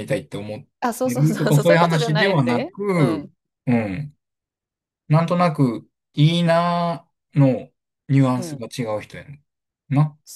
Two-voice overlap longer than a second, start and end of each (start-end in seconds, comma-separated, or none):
1.0-3.3